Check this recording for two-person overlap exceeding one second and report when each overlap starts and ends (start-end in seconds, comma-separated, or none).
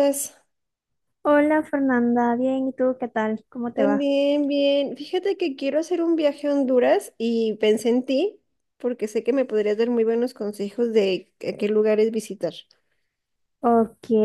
none